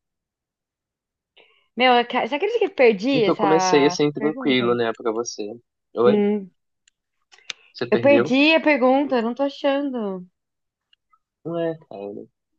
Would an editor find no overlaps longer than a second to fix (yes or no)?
no